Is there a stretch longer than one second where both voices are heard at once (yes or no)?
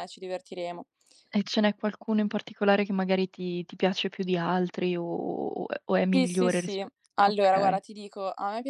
yes